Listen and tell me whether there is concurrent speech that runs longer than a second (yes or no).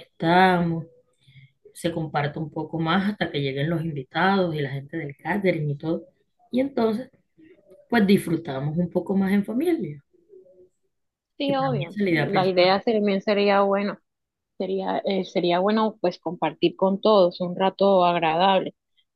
yes